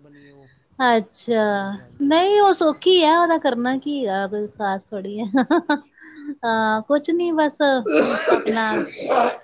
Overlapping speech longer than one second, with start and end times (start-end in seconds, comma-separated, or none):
none